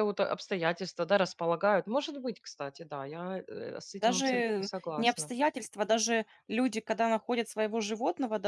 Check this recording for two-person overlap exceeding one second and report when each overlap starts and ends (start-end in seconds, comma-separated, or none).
4.0-5.3